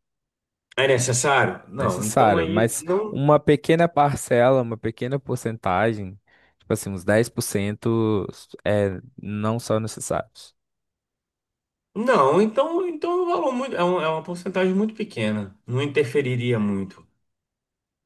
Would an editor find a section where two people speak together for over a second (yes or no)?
yes